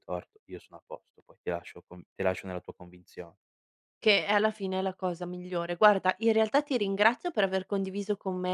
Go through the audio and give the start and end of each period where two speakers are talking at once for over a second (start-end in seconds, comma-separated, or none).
none